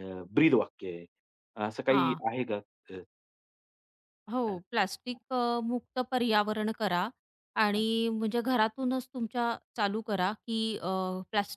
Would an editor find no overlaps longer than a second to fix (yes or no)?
yes